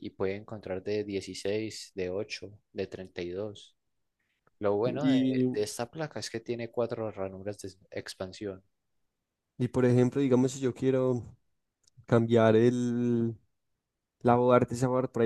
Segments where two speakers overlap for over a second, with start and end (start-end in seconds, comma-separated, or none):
none